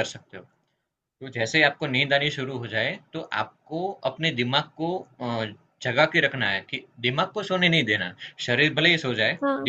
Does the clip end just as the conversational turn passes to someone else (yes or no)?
no